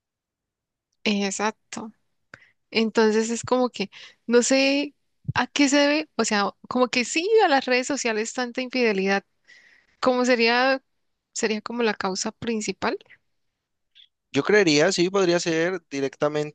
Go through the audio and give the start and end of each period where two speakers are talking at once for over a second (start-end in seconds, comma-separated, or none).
none